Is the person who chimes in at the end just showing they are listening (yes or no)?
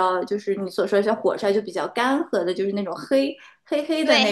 no